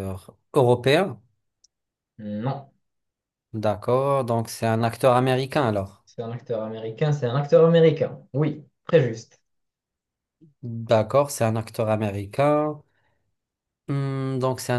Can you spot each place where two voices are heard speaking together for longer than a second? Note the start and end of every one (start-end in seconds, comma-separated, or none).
none